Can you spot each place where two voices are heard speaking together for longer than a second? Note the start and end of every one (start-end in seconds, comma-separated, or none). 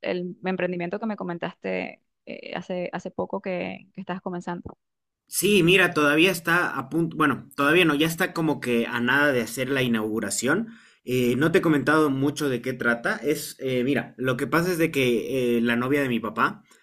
none